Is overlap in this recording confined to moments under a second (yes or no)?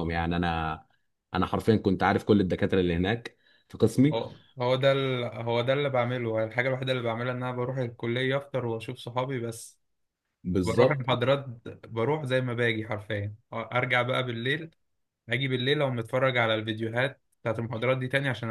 yes